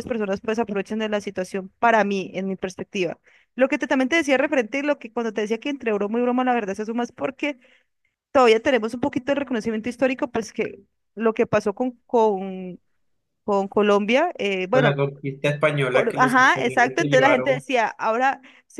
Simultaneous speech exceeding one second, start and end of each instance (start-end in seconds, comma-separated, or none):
15.9-17.6